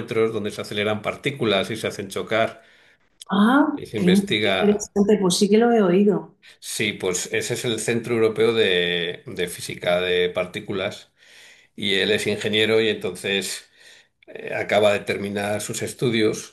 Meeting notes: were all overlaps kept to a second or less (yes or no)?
no